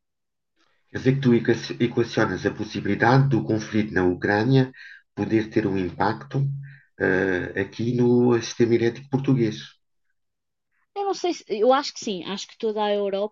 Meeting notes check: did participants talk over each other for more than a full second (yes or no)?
no